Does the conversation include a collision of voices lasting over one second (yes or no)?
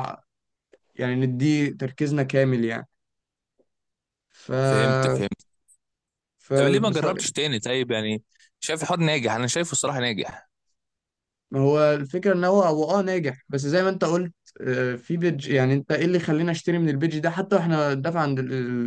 no